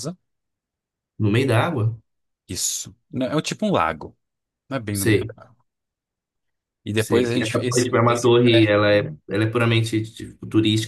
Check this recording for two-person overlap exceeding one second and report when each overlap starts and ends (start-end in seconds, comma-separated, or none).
6.9-8.7